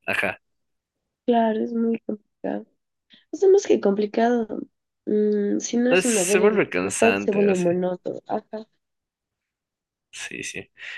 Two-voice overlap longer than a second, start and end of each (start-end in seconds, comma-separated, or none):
5.9-7.7